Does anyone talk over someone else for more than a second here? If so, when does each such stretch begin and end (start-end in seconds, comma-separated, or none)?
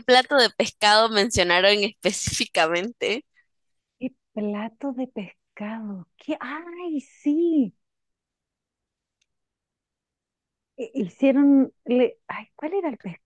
none